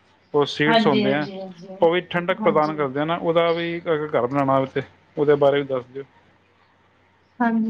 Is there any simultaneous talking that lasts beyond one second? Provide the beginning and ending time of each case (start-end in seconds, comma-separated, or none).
none